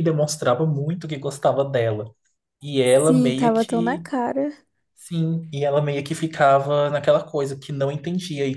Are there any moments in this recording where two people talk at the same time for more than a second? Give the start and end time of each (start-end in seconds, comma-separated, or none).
2.9-4.0